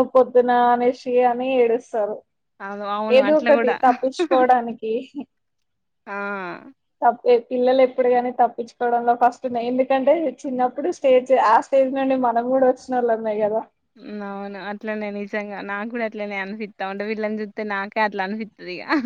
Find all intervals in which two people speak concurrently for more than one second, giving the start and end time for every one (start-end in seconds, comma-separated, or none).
none